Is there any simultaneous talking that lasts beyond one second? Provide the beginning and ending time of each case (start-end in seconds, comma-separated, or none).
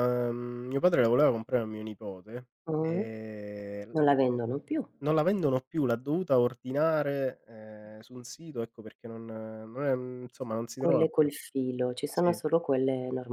none